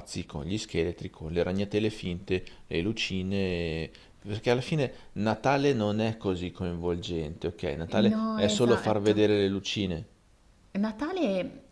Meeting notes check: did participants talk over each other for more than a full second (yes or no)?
yes